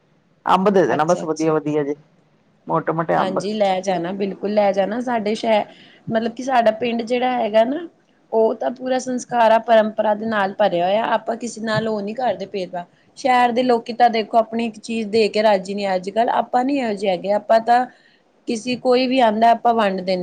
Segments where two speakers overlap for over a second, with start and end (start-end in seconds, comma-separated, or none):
none